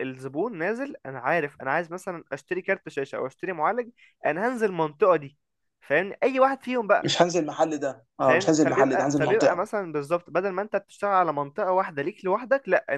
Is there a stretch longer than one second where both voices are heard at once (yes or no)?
yes